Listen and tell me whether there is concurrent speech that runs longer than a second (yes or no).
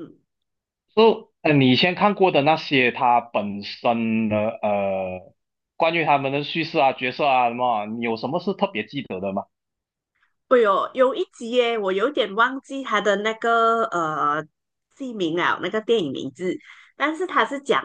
no